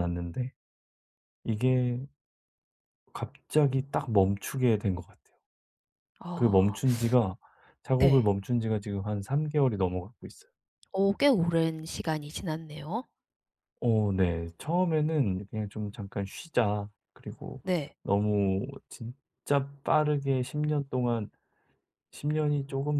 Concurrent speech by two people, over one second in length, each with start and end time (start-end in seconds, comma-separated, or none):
none